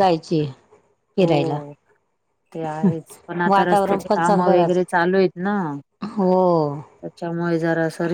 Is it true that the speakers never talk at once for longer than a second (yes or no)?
no